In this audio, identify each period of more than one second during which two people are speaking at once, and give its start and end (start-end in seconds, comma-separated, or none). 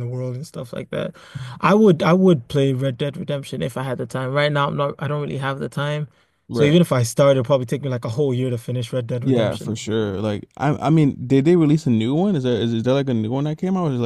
none